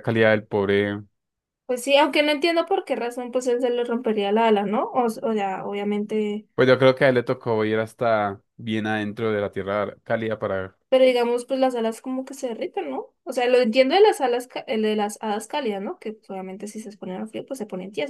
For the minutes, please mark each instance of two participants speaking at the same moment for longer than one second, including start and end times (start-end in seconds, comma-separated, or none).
none